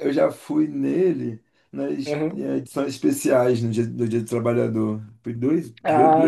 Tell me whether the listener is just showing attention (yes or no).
no